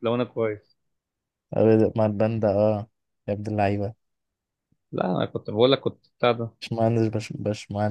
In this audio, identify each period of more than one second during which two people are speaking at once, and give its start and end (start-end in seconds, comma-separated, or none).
none